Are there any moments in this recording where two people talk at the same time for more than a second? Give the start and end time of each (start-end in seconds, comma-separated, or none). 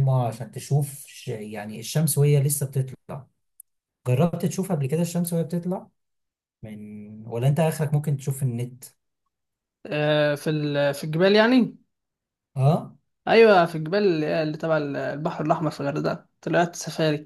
none